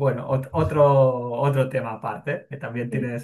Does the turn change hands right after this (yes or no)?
no